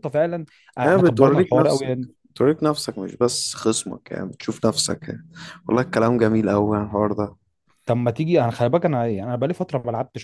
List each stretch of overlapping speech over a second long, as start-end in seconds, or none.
0.8-2.1